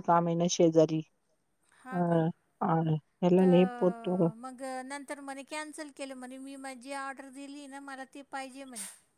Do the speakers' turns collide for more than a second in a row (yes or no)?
no